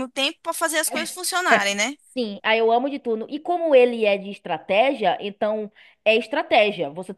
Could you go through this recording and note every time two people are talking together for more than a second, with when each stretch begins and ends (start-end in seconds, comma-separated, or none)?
none